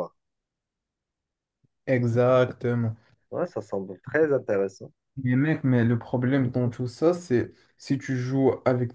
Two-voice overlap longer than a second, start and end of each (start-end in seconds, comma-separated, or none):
none